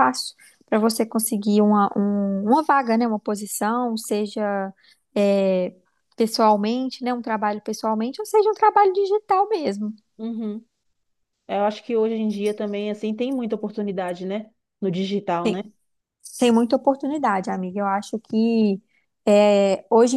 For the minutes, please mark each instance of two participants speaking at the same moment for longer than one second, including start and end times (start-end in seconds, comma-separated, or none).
none